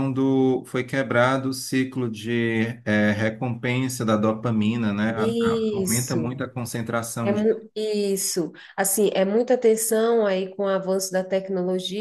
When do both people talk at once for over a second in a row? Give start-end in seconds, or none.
5.2-6.4